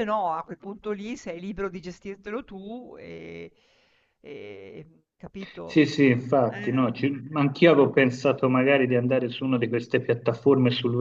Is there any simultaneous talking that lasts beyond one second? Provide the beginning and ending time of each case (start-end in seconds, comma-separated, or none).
none